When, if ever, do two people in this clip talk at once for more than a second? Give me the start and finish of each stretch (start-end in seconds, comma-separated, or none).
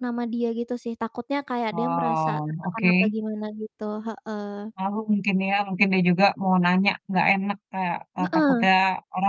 1.7-3.1